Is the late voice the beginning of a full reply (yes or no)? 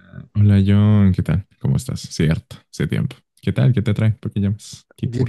yes